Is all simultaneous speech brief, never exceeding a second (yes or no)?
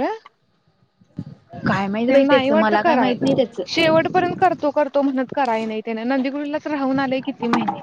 no